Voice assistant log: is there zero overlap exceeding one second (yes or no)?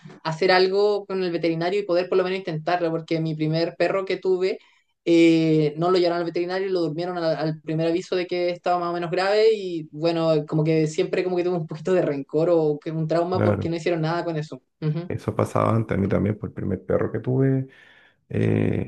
yes